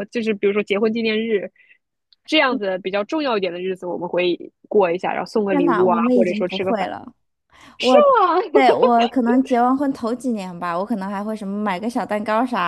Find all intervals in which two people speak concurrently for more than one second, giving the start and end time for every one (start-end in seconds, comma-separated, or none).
5.5-6.9